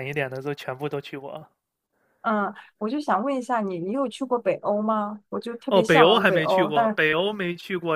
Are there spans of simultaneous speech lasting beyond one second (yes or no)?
yes